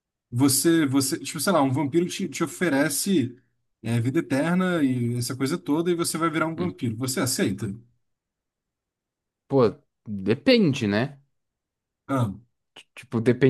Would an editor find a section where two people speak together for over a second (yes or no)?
no